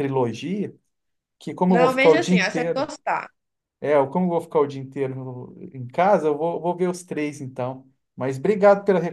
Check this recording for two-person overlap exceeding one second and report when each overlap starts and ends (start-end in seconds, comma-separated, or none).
1.7-2.9